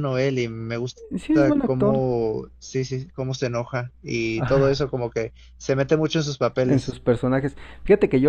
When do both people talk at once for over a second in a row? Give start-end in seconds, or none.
none